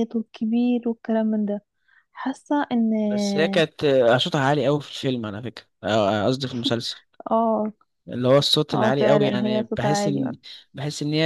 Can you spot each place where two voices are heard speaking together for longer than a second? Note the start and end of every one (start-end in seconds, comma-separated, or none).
8.7-10.2